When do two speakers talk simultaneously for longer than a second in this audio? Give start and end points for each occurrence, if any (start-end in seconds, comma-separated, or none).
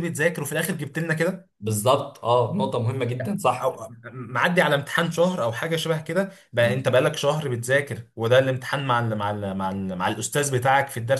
none